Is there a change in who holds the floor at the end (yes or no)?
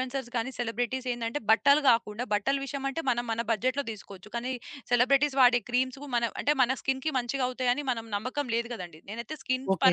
no